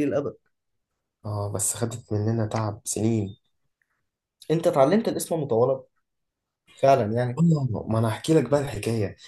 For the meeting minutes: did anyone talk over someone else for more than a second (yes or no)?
no